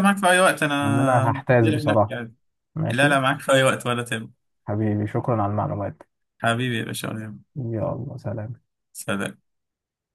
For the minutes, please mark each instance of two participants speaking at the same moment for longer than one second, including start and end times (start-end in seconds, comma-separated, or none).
0.8-2.1